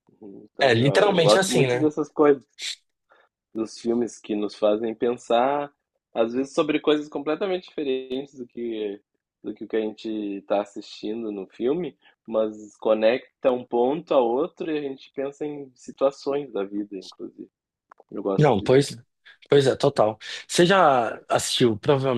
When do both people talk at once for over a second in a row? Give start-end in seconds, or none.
0.6-1.9